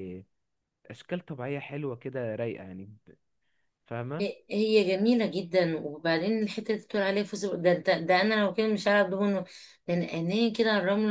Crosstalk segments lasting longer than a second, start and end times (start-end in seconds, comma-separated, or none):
none